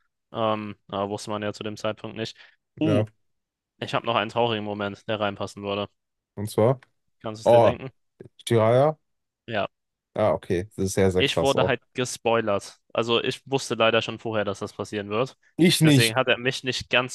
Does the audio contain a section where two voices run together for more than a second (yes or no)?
no